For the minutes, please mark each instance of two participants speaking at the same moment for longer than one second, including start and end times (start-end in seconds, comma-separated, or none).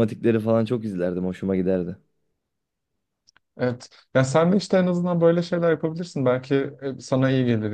none